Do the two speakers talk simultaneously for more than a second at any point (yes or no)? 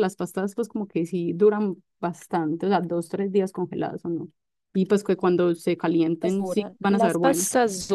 yes